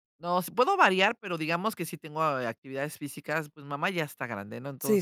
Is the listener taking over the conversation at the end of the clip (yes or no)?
no